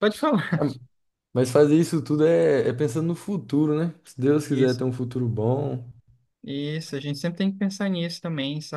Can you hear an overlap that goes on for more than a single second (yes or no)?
no